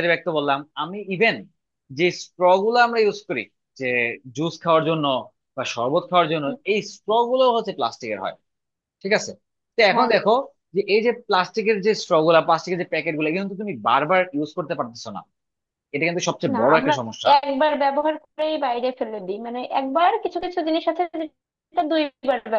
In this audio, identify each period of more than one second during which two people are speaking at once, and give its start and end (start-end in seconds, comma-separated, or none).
none